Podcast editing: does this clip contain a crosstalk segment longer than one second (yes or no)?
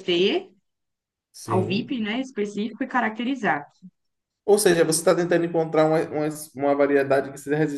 no